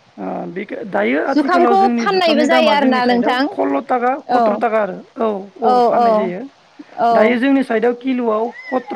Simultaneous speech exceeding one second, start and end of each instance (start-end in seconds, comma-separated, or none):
1.3-3.4